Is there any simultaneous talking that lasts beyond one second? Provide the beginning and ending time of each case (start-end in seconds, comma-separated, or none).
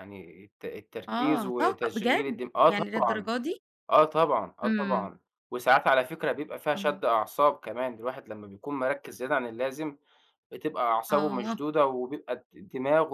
1.1-3.3